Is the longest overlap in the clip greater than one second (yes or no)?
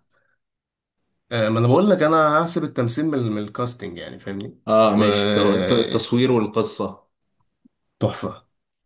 yes